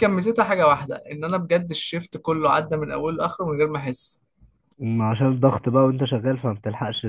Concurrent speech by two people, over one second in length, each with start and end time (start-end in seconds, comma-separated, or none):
none